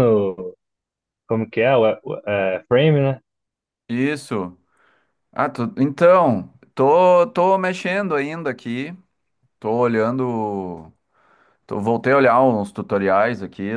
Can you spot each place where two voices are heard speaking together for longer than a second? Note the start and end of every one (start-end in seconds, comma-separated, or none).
none